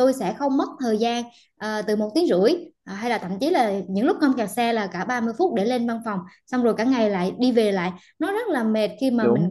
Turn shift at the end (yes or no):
no